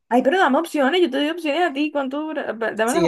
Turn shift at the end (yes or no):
yes